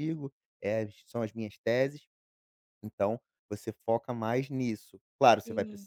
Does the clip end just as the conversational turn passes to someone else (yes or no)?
no